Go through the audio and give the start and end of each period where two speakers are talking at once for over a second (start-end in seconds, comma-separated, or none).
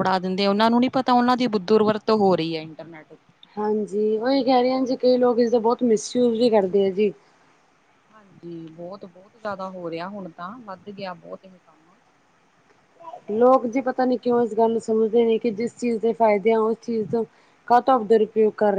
none